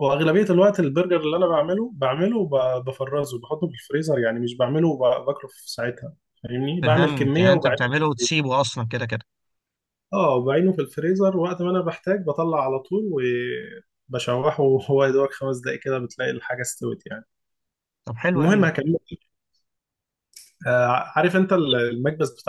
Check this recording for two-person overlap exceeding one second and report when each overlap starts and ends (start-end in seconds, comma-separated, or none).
6.8-8.3